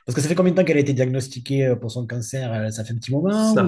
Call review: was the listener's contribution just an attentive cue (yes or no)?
no